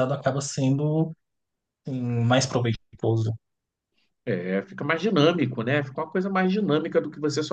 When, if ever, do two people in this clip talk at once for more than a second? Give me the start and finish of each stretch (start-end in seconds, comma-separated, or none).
none